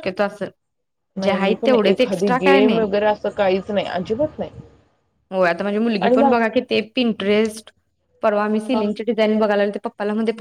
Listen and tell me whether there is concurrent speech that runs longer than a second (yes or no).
yes